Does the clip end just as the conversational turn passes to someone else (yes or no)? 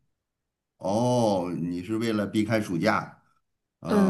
yes